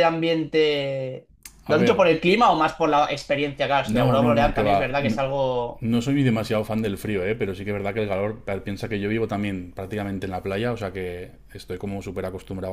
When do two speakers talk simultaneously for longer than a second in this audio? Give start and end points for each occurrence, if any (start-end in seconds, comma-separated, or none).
3.8-5.2